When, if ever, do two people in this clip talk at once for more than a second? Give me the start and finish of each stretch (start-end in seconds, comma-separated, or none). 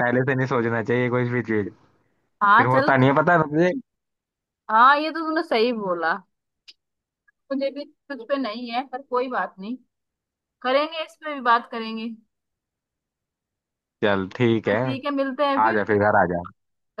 none